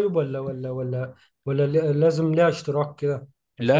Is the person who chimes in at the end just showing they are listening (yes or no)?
yes